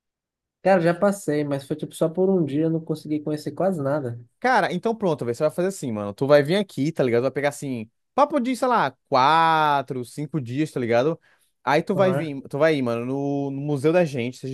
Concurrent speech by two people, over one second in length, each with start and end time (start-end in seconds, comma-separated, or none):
none